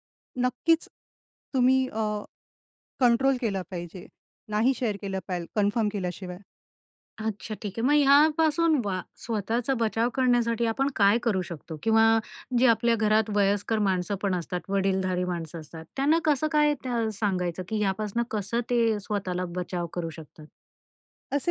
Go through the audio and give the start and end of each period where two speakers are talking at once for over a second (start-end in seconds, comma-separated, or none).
none